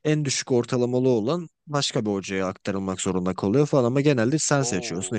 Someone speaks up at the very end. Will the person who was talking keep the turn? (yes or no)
yes